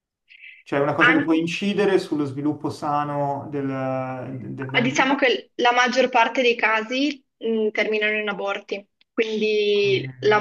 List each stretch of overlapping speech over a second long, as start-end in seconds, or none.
none